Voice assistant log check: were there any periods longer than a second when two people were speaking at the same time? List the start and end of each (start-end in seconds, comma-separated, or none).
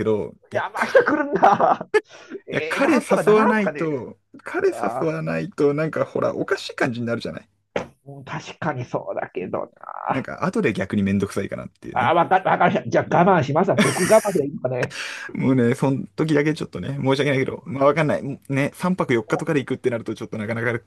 2.5-3.9